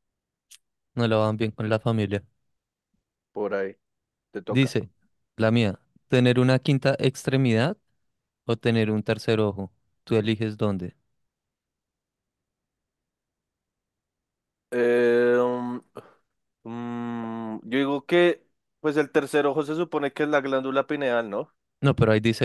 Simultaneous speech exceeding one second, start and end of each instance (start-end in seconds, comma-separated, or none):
none